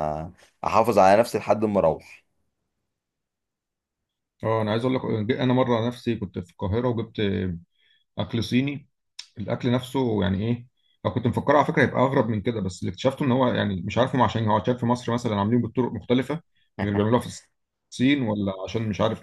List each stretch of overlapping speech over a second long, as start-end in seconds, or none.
none